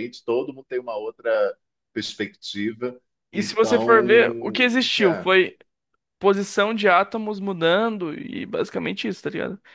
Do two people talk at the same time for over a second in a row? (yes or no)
yes